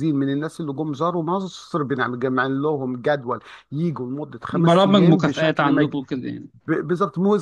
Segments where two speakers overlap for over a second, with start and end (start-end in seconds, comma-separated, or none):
4.5-5.9